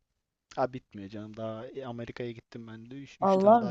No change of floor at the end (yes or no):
no